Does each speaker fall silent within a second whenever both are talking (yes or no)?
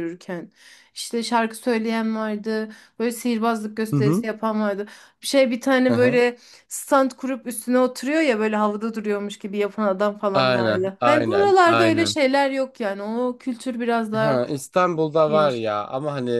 no